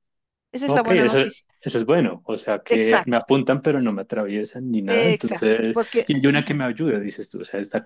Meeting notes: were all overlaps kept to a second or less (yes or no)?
no